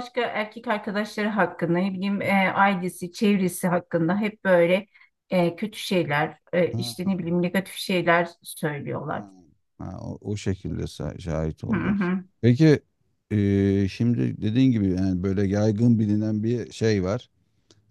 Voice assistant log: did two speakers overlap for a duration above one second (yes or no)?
no